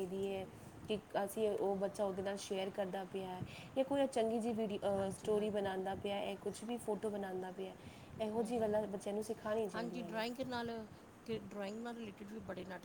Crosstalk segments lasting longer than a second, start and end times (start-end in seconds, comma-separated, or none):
none